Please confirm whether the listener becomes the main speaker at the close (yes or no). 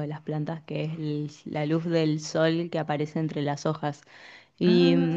no